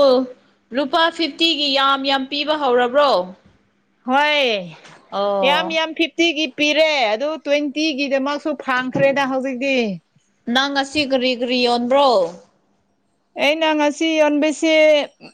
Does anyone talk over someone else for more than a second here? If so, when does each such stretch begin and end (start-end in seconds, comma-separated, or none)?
none